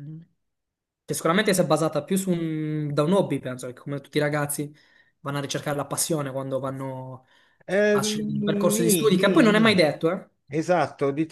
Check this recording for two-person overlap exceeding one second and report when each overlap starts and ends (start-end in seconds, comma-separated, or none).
7.9-9.8